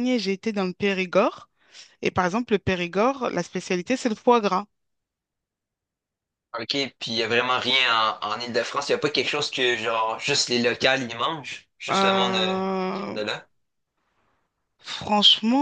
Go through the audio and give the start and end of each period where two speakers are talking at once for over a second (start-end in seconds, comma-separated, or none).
11.9-13.2